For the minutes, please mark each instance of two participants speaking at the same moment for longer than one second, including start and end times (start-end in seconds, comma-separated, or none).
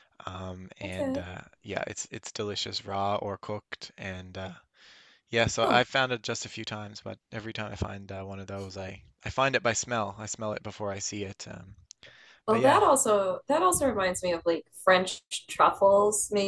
none